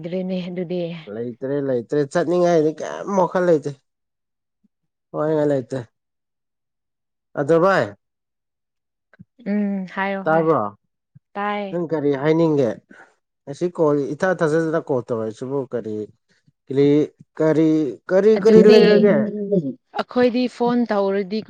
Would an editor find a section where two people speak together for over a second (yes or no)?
no